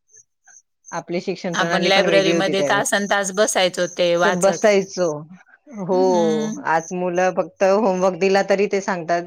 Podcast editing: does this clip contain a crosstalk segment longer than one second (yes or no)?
yes